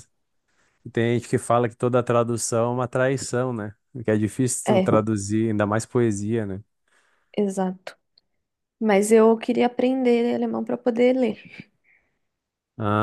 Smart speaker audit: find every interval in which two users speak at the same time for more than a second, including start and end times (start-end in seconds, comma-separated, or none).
none